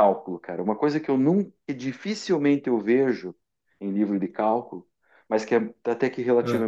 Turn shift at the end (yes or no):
no